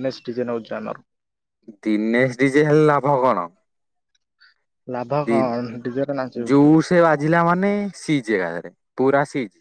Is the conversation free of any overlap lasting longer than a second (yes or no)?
no